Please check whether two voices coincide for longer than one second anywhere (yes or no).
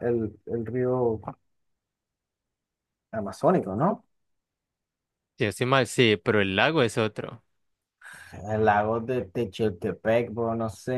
no